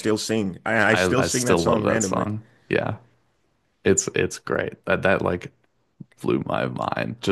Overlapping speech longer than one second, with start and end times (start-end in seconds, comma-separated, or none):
0.9-2.3